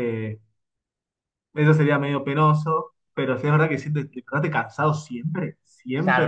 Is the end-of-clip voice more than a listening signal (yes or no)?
yes